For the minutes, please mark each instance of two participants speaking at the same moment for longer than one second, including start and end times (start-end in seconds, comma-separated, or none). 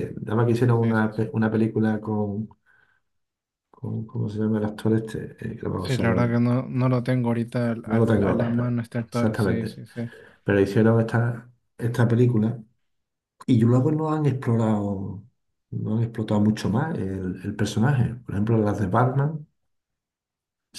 7.8-9.8